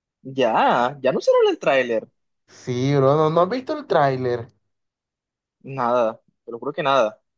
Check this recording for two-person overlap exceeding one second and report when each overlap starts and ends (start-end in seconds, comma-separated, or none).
none